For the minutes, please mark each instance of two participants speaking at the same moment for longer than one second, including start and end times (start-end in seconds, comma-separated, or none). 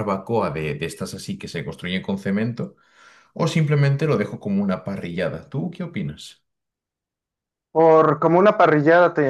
none